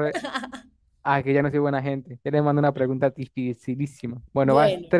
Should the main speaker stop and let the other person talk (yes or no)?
no